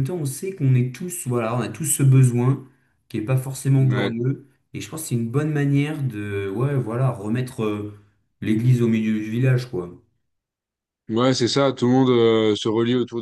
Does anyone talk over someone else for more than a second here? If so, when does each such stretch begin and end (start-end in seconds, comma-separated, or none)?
none